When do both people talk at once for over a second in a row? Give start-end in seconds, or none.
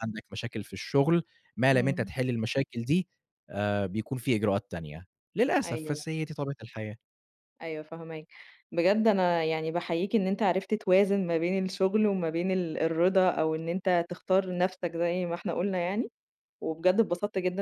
none